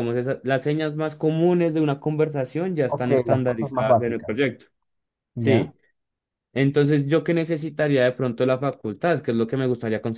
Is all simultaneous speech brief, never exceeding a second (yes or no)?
no